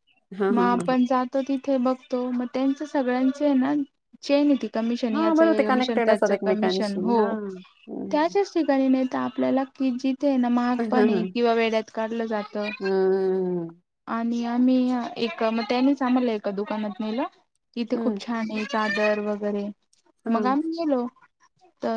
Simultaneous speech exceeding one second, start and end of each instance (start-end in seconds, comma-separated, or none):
5.1-7.3